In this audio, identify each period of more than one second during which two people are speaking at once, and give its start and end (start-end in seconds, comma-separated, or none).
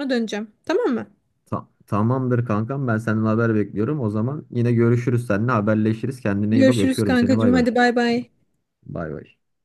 6.5-7.7